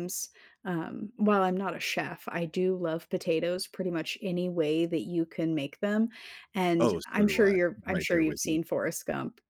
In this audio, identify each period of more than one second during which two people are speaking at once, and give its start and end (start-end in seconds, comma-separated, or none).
6.8-8.6